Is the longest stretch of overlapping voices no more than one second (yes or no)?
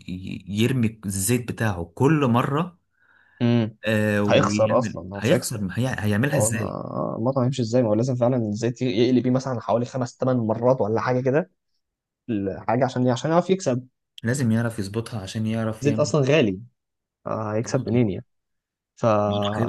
no